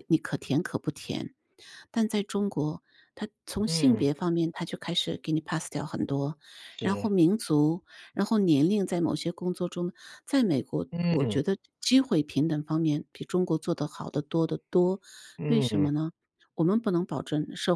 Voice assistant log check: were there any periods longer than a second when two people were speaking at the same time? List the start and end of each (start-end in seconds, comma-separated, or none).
none